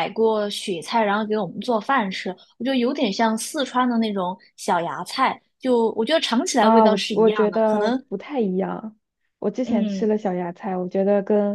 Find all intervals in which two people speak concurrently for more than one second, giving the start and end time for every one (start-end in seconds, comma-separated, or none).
6.6-8.0